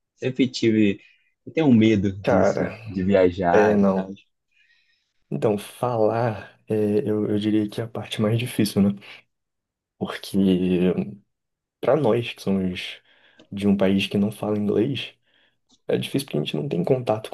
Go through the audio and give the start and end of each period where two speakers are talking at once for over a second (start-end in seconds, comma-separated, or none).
none